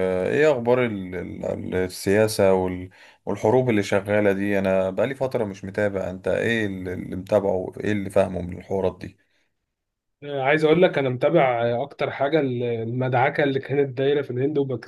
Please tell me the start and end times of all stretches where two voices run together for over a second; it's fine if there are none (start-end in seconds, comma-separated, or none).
none